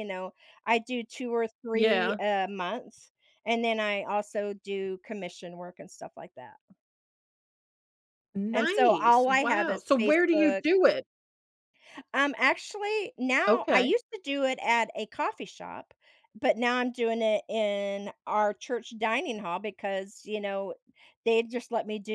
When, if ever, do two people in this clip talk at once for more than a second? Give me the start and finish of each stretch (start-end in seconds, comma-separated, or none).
8.5-10.6